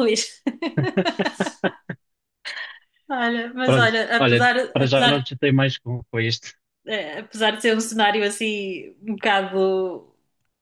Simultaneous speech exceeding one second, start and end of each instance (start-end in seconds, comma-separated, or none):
3.6-5.2